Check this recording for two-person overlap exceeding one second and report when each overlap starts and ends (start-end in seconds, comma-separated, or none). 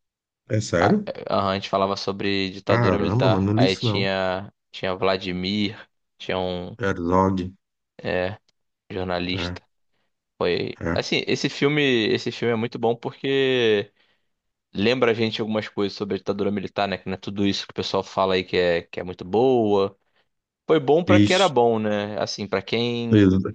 2.7-4.1